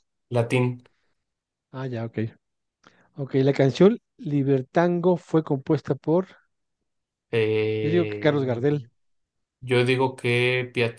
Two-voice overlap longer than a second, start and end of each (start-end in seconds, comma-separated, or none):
none